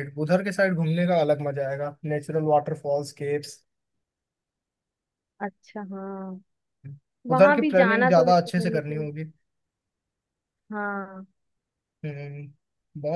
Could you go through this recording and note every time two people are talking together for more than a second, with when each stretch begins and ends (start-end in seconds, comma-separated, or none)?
7.3-9.1